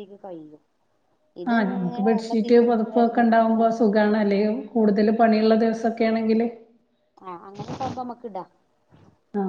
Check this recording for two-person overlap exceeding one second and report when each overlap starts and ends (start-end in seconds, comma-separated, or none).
1.5-3.6